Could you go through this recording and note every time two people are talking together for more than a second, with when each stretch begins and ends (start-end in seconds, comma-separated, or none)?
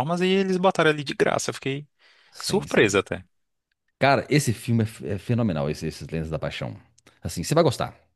none